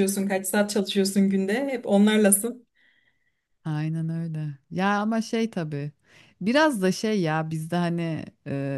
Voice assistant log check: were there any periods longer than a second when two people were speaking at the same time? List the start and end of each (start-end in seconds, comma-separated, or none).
none